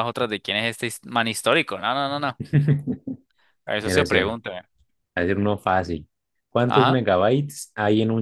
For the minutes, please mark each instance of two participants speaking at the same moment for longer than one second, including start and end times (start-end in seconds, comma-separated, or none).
none